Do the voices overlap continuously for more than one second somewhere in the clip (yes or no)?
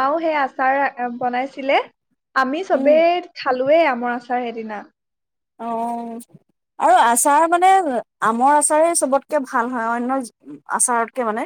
no